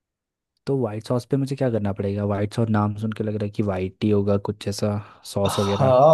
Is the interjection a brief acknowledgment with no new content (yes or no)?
no